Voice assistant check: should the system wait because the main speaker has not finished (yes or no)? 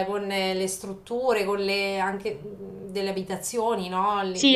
no